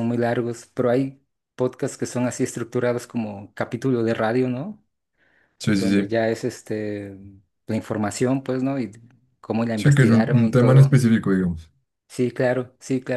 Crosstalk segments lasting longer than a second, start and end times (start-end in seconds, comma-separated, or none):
9.7-11.0